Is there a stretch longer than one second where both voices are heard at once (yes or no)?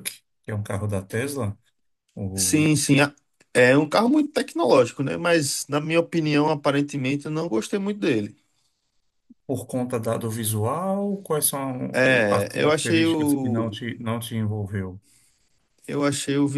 yes